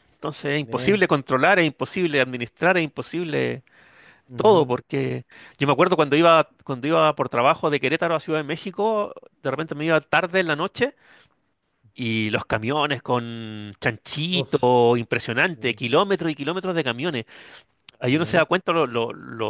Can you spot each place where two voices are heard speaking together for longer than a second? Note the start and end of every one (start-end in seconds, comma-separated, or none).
none